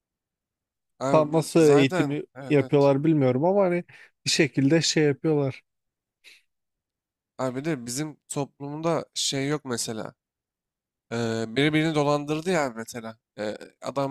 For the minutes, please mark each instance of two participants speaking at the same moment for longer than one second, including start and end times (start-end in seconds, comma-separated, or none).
1.1-2.9